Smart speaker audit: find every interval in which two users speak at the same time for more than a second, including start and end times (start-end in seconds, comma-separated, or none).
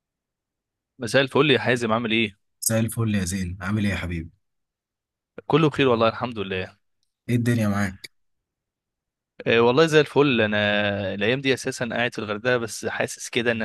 none